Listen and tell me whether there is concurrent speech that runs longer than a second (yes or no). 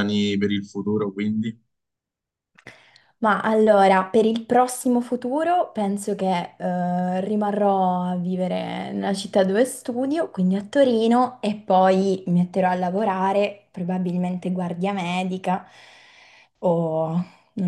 no